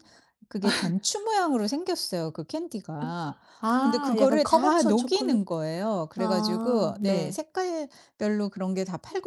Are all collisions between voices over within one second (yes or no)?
no